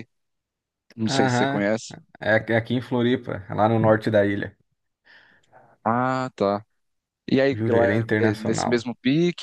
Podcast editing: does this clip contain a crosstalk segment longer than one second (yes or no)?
yes